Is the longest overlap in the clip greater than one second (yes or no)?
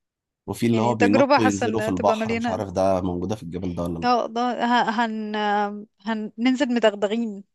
yes